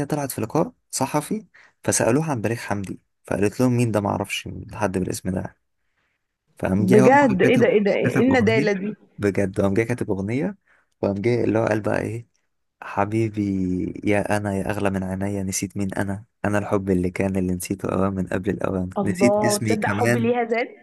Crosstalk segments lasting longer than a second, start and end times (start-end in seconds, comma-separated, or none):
6.8-8.7, 19.0-20.3